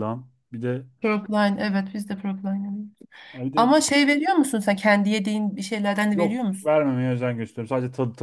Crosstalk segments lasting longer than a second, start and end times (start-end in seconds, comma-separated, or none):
none